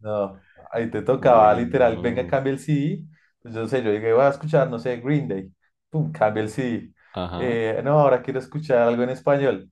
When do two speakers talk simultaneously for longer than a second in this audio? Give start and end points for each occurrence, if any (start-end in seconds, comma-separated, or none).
1.2-2.4